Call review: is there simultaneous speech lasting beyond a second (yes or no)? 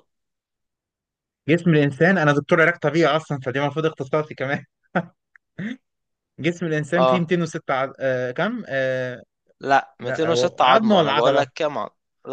yes